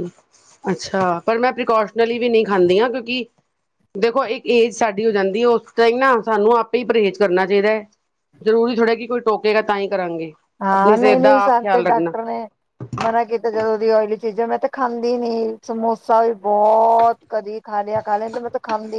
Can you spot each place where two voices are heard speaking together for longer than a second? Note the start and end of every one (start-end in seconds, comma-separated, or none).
10.7-12.1